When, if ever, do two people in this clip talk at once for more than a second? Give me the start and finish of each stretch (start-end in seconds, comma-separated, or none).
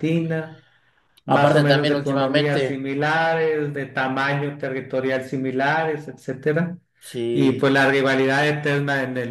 1.3-2.8